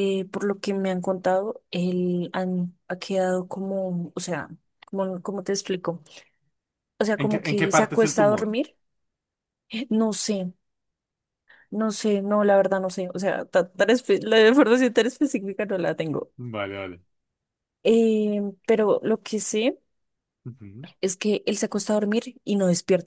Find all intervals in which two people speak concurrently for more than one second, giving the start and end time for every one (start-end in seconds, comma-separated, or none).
7.2-8.5